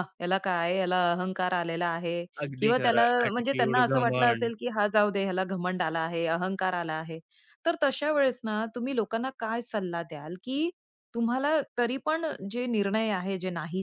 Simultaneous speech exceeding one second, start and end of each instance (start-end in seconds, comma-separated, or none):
2.5-4.5